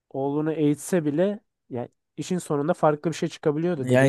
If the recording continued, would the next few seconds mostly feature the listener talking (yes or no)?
yes